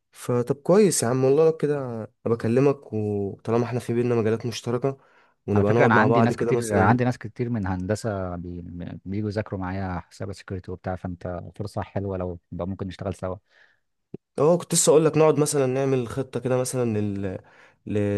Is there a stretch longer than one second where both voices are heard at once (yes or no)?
yes